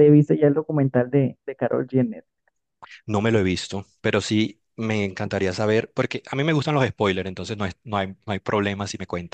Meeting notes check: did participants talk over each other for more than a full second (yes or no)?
no